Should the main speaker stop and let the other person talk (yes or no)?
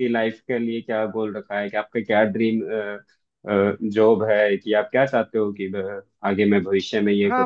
yes